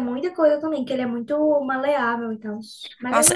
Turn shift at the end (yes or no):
yes